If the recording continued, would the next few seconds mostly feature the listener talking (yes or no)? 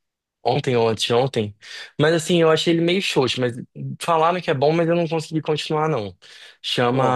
no